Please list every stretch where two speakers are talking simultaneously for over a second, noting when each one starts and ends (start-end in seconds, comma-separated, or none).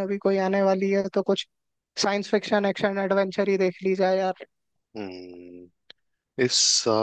none